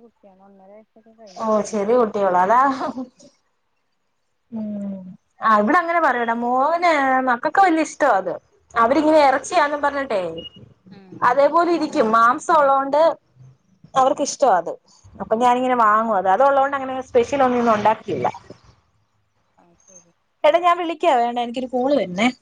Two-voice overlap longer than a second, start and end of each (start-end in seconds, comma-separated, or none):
none